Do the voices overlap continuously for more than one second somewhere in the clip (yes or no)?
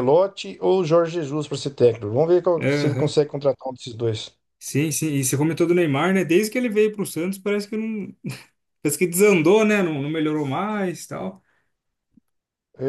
no